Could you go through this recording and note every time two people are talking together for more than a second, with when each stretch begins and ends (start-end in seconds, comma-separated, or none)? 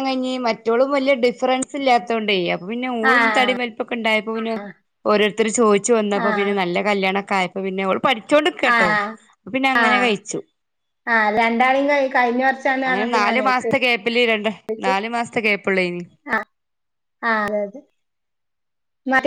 none